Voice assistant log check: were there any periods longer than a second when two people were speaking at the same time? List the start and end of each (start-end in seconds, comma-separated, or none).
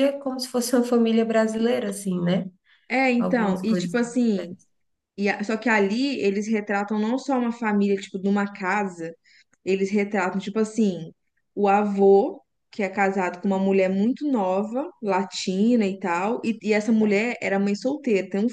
3.2-4.6